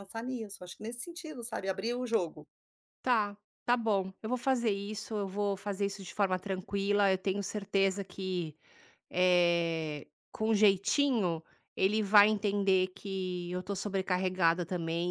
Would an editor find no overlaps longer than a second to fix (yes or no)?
yes